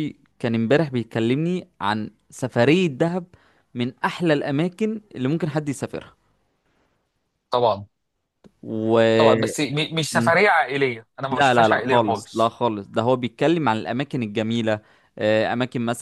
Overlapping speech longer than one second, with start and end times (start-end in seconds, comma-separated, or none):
11.3-12.5